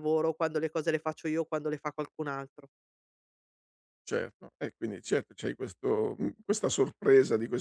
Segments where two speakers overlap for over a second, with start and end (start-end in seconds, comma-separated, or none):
none